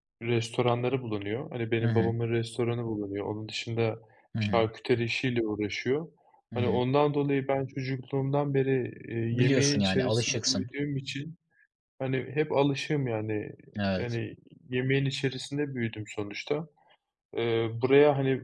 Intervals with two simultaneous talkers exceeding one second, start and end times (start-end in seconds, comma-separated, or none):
9.3-10.7